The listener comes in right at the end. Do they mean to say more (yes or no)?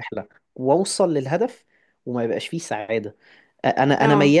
no